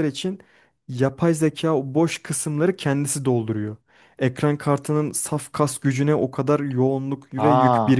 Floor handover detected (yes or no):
yes